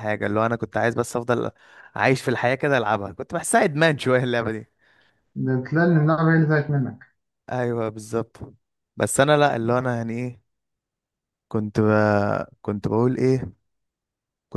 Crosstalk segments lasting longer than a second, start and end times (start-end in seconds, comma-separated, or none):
none